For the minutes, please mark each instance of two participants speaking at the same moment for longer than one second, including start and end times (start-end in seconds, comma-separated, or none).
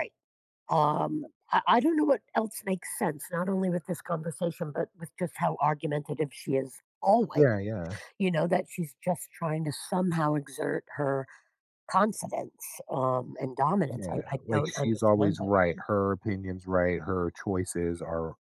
13.9-15.5